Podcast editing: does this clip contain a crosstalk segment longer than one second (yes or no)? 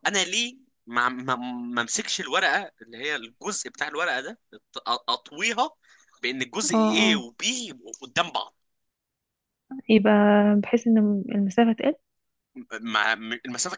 no